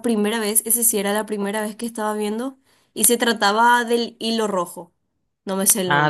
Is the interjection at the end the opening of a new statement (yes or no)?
yes